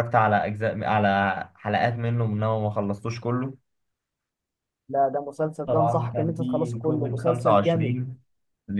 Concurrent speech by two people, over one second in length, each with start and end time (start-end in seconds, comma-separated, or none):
5.7-8.0